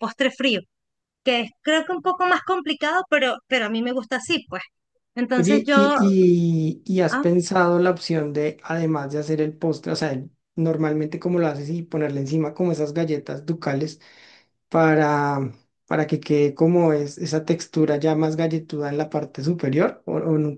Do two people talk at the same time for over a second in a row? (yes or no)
no